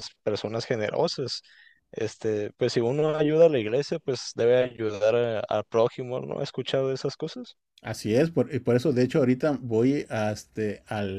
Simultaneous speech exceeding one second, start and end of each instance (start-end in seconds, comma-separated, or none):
none